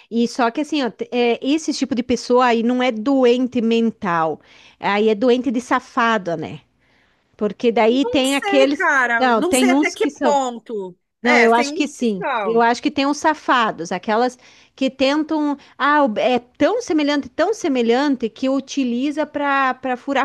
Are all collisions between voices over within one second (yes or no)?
no